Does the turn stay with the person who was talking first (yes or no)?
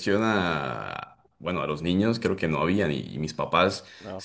yes